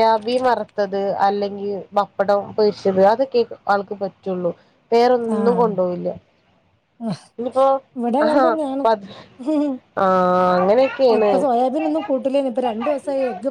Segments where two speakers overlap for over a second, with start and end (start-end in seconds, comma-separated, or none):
none